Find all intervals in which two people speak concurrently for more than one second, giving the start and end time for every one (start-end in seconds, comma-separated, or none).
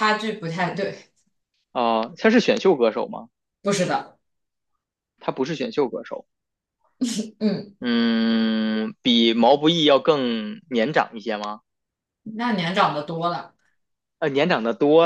none